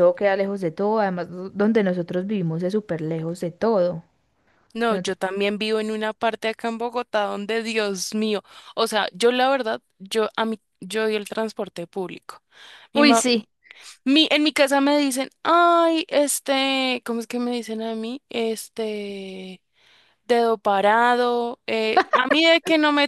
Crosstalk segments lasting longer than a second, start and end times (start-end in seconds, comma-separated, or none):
none